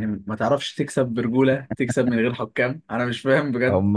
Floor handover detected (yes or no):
yes